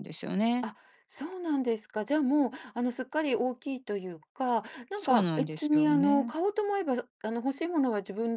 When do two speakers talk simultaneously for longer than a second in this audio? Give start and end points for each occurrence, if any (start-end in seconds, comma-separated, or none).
5.0-6.3